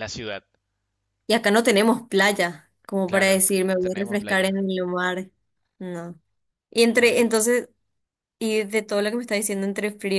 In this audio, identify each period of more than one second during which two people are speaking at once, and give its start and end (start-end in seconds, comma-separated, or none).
3.0-4.5